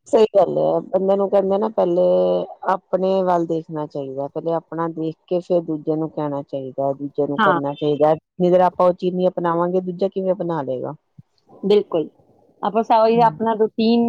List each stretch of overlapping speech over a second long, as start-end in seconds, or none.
none